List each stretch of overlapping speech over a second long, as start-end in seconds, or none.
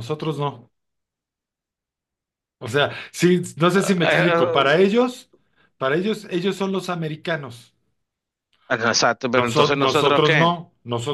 9.3-10.6